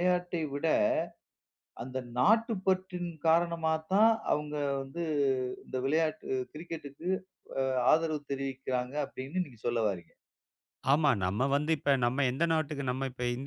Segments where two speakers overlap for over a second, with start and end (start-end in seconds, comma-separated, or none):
none